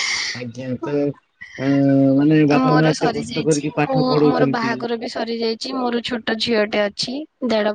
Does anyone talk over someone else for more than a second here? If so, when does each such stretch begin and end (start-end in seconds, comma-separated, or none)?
2.7-4.7